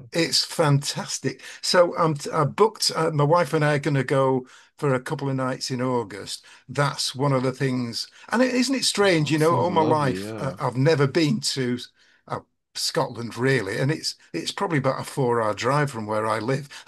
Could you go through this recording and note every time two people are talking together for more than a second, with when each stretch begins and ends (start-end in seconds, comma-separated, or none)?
9.1-10.6